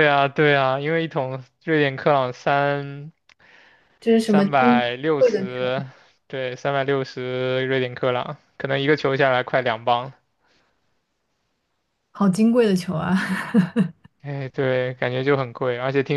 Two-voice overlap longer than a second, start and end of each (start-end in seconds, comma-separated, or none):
4.2-5.7